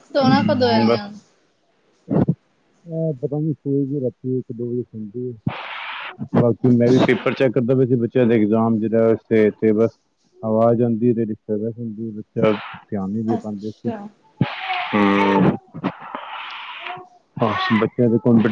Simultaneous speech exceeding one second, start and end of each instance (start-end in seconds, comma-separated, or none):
none